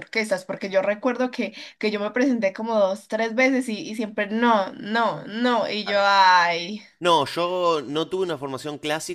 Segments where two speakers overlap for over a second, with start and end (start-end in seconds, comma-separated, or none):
none